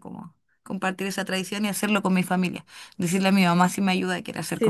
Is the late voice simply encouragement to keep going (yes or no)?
no